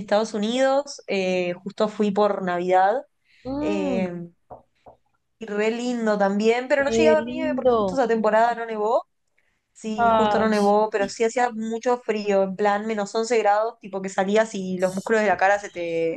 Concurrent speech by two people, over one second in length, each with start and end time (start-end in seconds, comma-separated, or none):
6.8-8.0